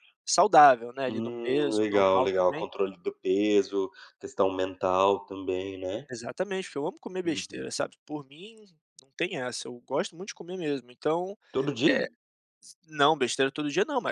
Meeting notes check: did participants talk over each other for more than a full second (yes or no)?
yes